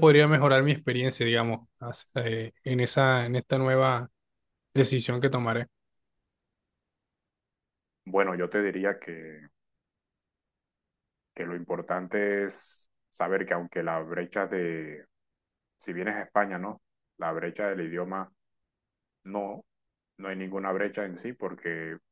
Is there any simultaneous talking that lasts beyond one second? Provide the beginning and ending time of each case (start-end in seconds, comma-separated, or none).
none